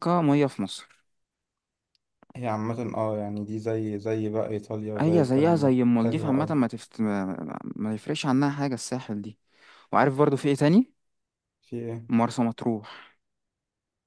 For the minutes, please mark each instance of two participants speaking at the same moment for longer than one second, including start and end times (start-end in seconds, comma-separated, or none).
5.0-6.5